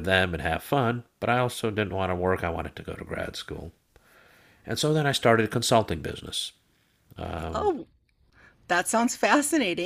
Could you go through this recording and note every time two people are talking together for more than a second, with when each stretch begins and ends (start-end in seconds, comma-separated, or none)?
none